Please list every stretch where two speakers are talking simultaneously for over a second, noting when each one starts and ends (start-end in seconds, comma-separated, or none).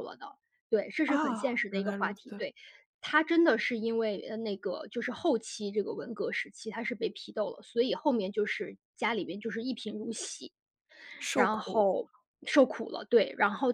1.1-2.4